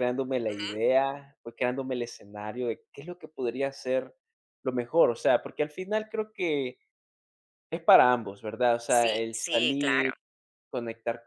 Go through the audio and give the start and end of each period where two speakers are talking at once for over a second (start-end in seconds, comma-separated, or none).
8.9-10.1